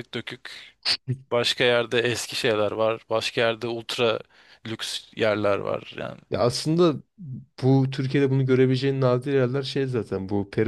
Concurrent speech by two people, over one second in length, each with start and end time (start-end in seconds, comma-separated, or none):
none